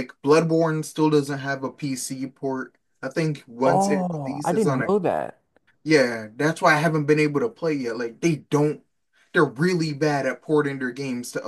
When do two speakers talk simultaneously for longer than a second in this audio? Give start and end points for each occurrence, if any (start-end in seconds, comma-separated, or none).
3.6-4.9